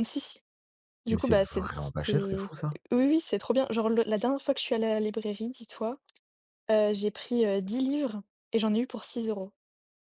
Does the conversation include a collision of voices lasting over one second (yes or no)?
yes